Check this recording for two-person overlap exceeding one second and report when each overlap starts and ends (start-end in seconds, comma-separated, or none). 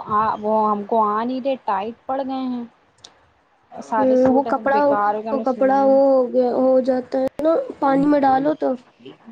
4.0-5.9